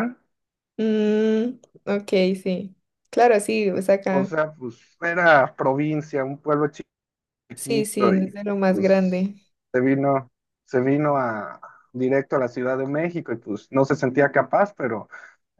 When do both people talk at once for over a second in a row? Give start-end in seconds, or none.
7.5-9.3